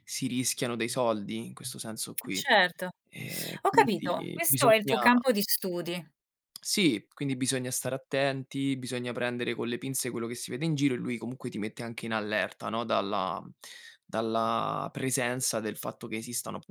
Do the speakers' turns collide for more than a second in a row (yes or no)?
yes